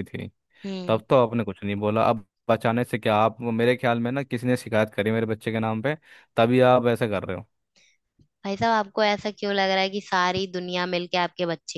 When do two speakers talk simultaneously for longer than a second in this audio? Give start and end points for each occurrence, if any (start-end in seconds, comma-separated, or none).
none